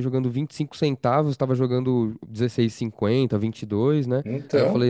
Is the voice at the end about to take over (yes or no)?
no